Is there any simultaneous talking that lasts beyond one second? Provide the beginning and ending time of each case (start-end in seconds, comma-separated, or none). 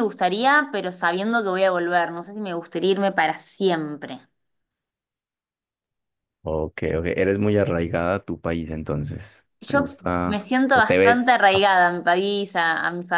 9.7-11.4